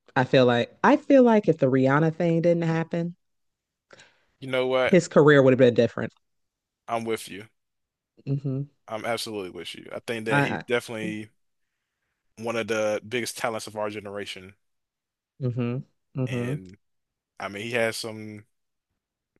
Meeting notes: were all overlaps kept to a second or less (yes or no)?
yes